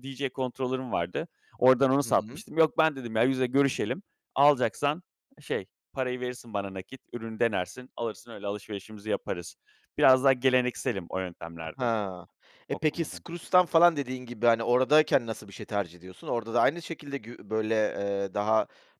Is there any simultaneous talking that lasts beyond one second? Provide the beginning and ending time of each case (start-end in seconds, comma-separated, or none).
none